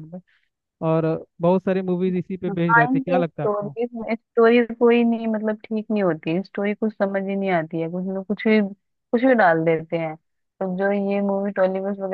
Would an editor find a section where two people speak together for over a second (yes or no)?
yes